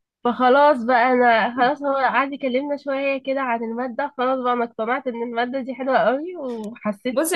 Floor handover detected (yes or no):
no